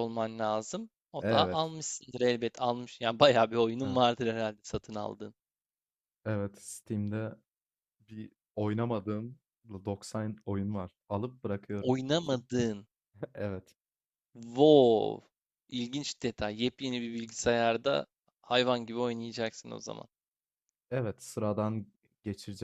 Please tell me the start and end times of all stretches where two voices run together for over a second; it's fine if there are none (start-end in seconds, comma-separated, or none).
none